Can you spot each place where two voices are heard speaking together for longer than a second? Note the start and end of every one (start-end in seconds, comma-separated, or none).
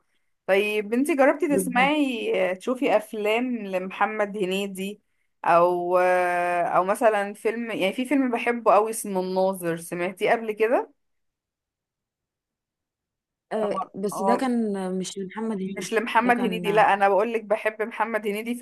15.7-16.9